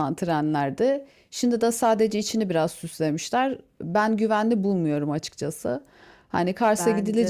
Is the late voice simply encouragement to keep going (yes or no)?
yes